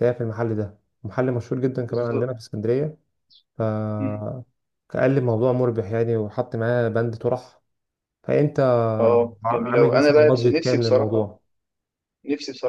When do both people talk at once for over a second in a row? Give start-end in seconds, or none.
9.4-11.3